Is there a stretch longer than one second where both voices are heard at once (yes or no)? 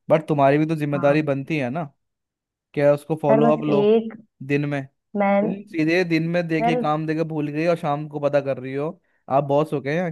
no